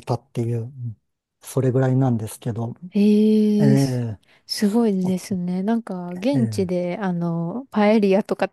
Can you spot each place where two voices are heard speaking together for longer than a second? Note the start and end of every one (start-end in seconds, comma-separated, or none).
none